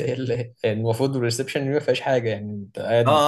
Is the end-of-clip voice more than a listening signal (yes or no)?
yes